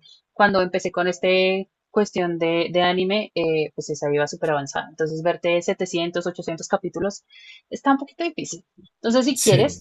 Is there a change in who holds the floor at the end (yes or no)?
no